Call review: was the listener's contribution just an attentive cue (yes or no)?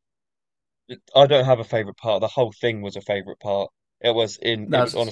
yes